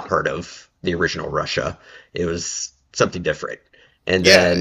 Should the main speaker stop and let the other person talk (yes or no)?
yes